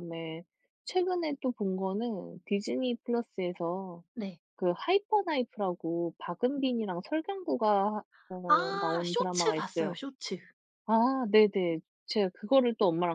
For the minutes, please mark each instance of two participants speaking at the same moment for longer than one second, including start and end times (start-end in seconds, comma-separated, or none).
8.5-9.9